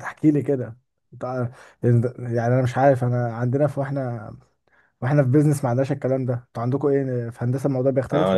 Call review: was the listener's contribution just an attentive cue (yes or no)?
no